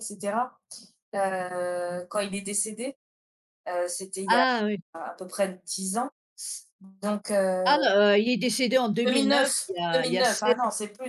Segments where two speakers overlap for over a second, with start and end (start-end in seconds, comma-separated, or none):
9.1-10.5